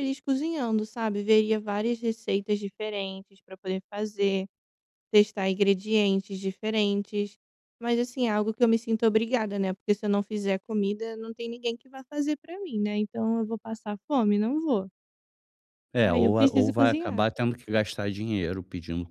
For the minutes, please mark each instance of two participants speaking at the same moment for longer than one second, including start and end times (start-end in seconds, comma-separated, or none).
16.0-17.3